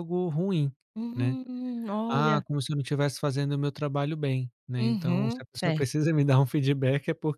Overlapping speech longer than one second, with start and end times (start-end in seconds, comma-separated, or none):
4.8-6.0